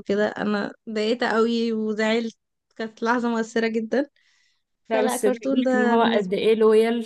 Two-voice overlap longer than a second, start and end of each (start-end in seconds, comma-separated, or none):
4.9-6.3